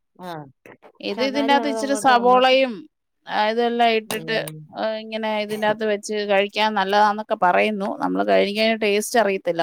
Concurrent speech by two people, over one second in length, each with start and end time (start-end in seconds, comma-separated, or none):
1.1-2.5